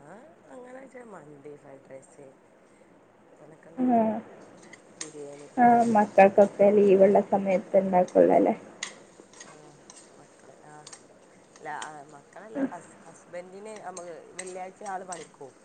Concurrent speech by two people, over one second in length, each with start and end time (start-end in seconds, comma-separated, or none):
none